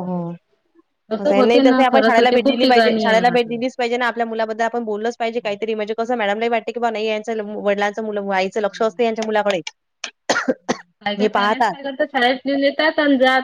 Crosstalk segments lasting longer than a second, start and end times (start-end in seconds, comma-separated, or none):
1.2-3.6